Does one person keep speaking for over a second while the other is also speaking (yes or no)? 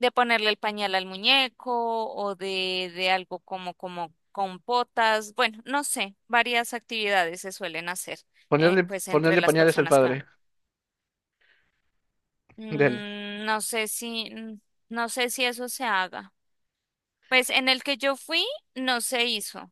yes